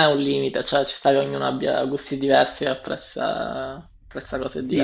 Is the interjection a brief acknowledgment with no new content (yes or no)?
no